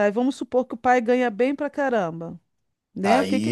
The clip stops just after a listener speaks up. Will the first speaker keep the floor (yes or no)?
no